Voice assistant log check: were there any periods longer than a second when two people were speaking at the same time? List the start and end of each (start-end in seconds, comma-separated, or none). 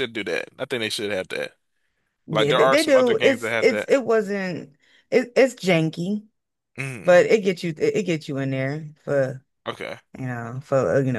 2.3-3.9